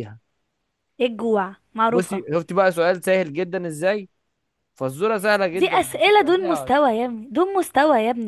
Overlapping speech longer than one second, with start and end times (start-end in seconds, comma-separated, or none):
5.5-6.7